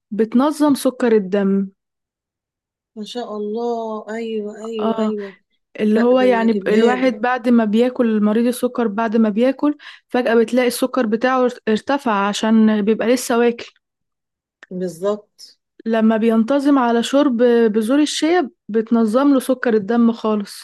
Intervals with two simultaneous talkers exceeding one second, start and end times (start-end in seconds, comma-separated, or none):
5.9-7.1